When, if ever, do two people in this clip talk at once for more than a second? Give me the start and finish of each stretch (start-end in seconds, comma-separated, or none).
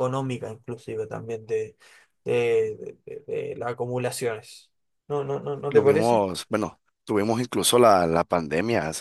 none